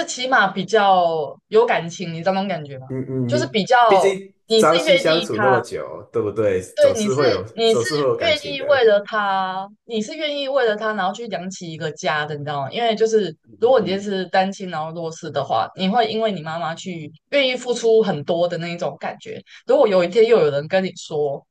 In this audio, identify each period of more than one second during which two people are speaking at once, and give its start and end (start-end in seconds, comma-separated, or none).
3.3-5.6, 6.7-8.9